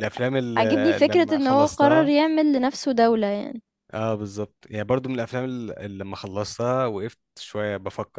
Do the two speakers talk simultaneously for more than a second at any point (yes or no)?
yes